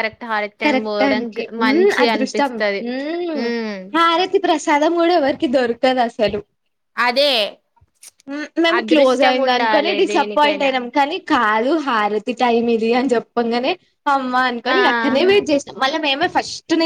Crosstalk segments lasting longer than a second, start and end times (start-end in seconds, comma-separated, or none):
0.6-2.5